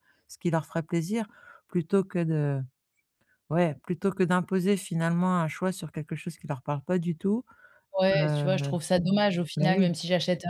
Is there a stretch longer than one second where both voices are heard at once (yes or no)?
no